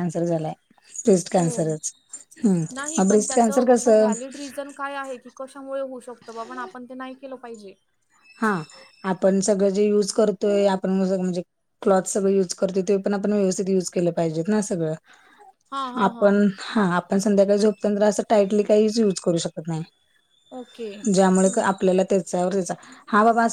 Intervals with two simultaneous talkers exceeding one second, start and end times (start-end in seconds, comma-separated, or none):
2.7-4.1